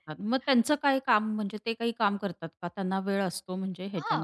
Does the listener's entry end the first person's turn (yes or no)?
yes